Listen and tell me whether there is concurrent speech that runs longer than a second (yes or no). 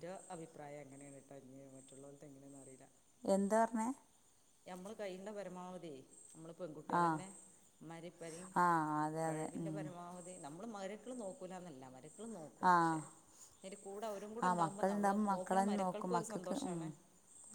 yes